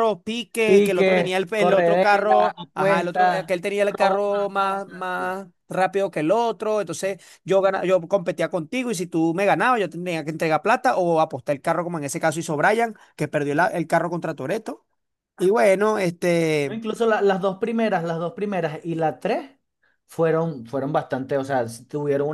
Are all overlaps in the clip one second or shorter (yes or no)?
no